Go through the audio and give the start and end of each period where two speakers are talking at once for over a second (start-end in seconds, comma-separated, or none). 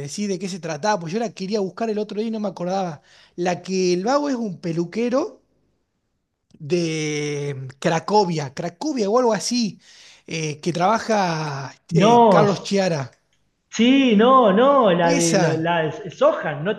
none